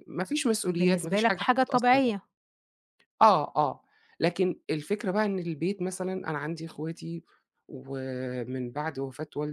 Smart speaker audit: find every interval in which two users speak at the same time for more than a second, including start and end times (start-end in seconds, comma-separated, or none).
0.7-2.0